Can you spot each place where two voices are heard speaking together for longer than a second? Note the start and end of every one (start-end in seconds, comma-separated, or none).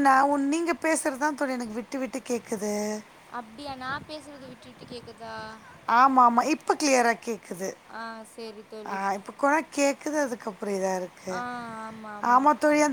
none